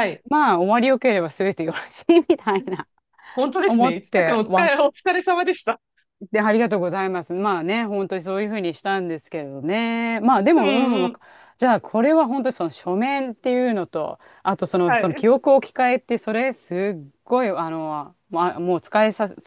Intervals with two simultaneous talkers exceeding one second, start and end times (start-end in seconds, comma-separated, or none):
3.7-4.9